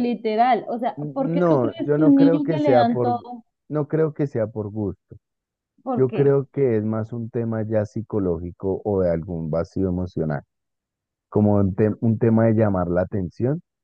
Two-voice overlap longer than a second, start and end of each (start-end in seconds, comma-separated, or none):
1.0-3.2